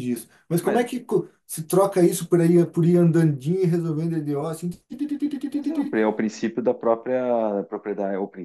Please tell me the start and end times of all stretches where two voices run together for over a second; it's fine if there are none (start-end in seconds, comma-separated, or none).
none